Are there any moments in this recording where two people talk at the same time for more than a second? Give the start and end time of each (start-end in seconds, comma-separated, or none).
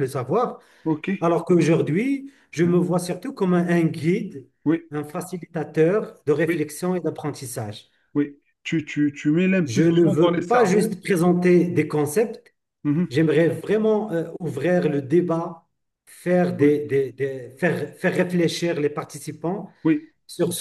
9.7-10.9